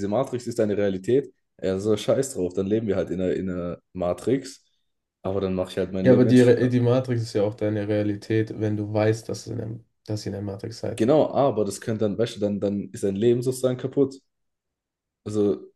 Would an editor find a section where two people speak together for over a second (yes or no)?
no